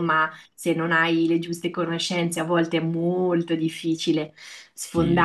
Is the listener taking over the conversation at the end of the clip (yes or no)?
no